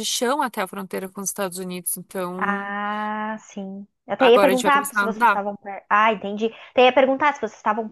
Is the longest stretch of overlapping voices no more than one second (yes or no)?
no